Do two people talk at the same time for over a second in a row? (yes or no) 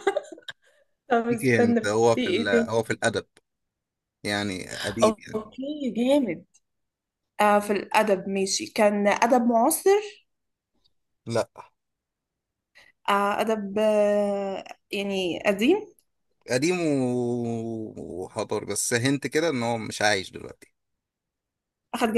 yes